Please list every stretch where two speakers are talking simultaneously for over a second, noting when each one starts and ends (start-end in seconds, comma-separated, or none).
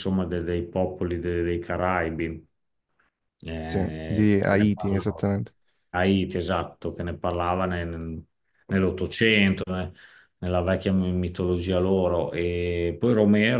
3.6-5.3